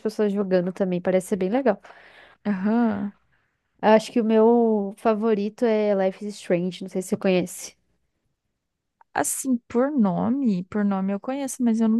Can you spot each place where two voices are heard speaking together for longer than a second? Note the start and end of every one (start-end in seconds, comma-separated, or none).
none